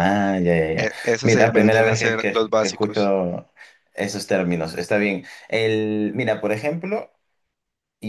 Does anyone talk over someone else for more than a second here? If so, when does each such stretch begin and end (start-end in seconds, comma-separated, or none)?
0.8-3.1